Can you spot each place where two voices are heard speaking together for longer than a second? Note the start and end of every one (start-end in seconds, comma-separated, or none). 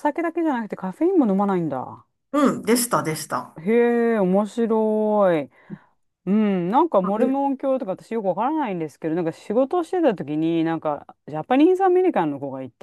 none